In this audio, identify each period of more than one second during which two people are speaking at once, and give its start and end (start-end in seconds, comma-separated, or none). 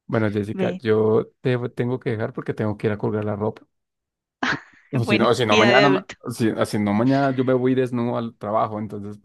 4.9-6.2